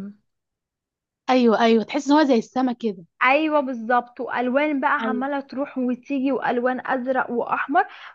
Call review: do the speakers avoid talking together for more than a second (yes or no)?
yes